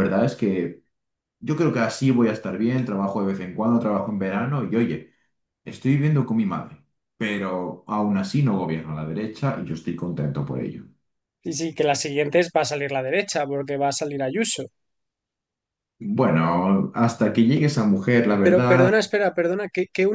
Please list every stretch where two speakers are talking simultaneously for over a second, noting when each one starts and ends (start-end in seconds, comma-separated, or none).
none